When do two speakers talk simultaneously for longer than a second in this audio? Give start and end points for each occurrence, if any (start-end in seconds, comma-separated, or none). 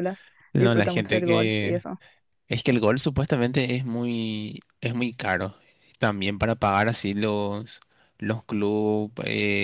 0.5-1.8